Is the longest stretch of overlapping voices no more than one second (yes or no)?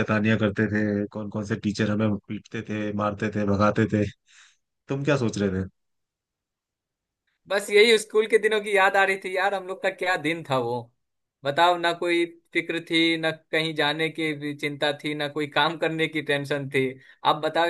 yes